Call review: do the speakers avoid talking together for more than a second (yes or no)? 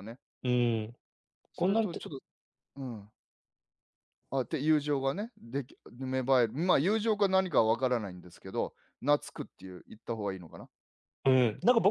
yes